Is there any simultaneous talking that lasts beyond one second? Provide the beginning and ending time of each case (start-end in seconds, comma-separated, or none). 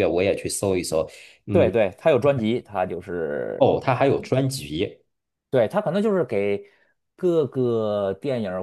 none